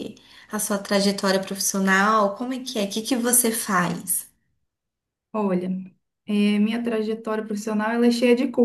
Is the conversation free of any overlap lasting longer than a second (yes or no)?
yes